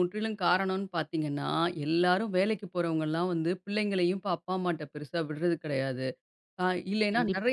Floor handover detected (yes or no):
no